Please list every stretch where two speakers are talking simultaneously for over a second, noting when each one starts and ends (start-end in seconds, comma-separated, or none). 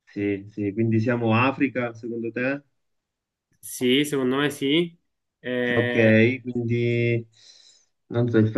none